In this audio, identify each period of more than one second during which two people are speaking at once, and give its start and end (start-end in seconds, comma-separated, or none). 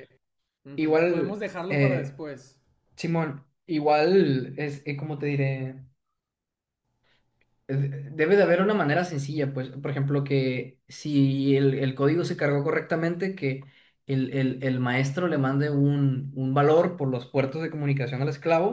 0.8-2.2